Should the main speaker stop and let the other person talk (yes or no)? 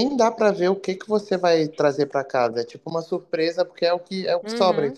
yes